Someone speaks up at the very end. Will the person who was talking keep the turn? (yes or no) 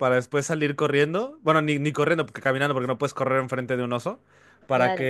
yes